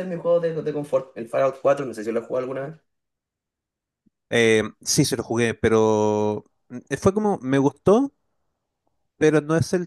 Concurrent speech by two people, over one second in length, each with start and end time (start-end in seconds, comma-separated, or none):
none